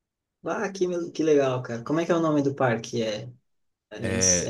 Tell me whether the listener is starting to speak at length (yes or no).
no